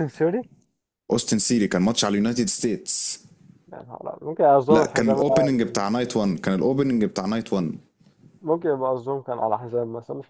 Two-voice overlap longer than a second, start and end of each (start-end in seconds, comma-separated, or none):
none